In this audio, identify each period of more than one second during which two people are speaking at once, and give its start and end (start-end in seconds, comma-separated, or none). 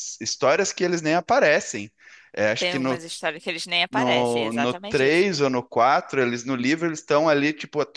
3.9-5.2